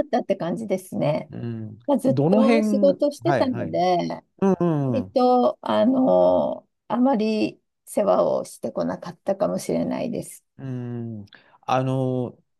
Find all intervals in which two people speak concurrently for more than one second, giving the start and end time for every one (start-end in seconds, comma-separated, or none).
1.9-3.8